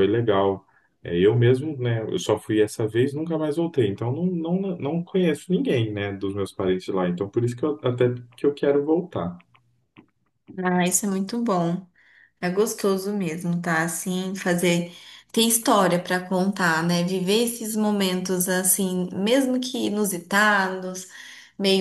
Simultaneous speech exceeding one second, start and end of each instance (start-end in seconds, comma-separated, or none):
none